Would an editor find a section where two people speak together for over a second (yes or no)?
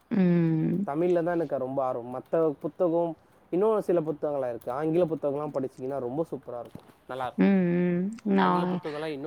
no